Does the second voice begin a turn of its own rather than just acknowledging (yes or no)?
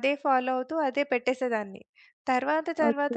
no